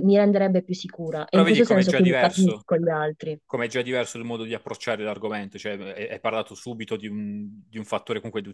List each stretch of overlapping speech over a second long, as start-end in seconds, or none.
1.3-2.7